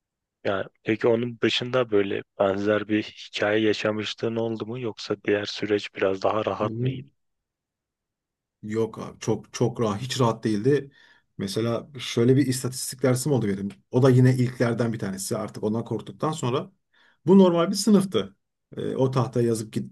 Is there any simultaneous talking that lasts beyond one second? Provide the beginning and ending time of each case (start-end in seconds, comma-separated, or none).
none